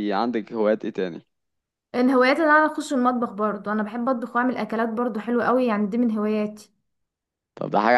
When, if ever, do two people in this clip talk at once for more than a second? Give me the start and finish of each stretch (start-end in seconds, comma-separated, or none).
none